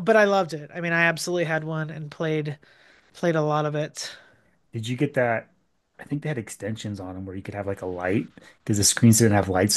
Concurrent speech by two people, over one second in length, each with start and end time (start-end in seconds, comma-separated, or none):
none